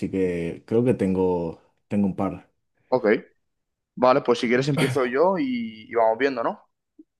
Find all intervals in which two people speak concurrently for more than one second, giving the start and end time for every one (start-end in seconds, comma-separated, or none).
none